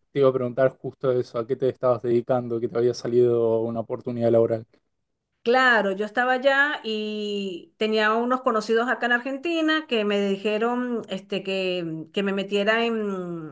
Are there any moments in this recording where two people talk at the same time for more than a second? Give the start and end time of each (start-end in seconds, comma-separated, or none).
none